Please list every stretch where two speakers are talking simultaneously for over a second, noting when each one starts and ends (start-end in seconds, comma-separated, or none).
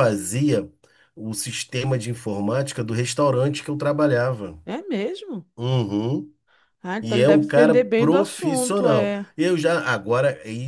7.0-9.2